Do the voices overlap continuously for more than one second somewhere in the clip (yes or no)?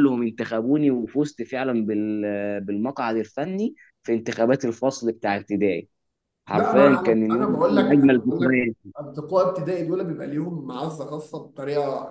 yes